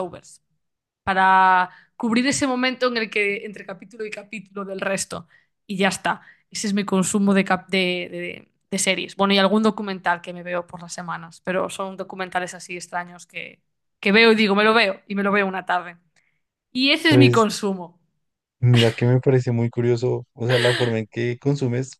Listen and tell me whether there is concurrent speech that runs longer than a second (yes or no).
no